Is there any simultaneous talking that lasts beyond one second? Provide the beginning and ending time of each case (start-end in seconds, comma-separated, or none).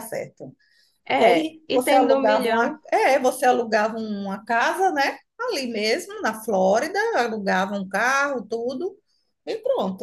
1.2-2.8